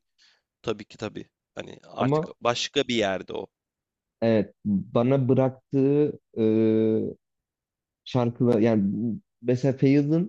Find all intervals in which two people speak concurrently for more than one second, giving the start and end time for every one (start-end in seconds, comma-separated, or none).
none